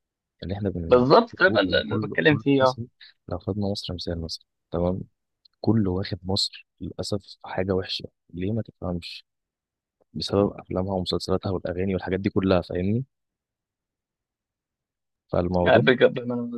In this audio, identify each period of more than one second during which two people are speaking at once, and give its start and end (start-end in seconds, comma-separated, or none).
0.9-2.8